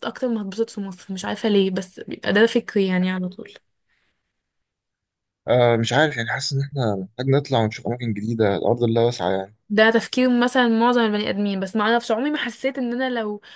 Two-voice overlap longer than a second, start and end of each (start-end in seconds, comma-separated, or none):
none